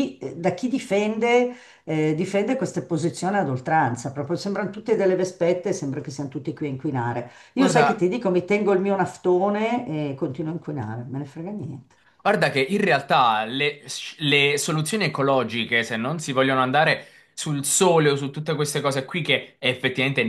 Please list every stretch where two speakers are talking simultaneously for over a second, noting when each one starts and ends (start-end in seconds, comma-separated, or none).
none